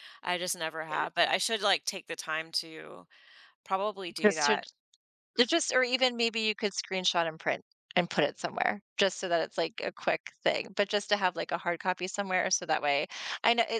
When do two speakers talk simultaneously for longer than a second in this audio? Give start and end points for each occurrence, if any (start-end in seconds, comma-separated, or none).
none